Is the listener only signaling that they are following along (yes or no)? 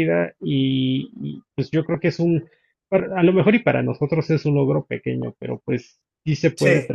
yes